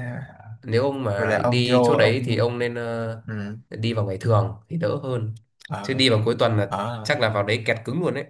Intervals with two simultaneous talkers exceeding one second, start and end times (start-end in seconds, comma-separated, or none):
1.1-2.5